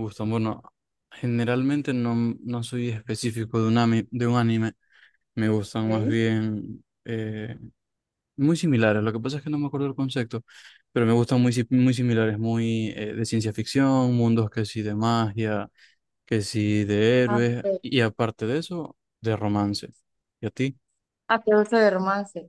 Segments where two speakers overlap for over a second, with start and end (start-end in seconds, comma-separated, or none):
none